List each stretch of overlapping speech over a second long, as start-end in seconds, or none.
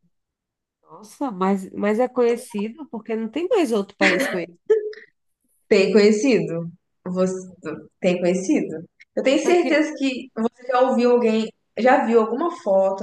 none